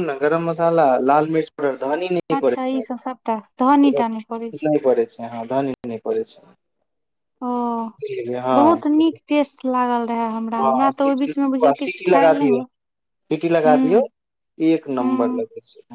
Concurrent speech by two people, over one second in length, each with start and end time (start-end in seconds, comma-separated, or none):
10.6-12.6